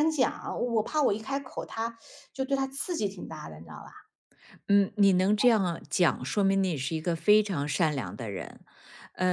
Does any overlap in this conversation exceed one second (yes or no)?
no